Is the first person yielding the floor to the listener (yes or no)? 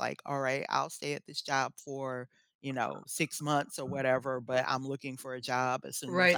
yes